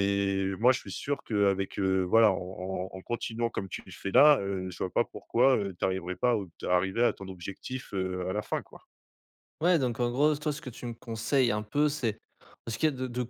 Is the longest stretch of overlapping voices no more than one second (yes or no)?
yes